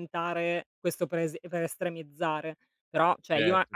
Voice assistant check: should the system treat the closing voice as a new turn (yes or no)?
no